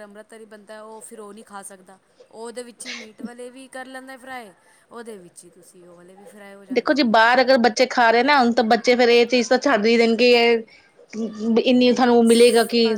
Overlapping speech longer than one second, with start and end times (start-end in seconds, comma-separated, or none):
none